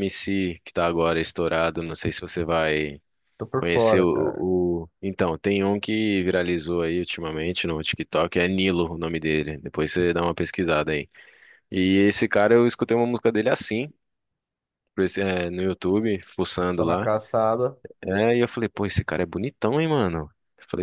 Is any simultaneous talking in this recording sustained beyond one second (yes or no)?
no